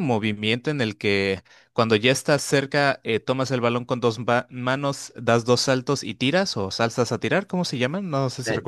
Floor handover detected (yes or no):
yes